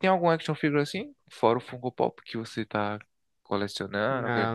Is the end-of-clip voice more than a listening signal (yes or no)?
yes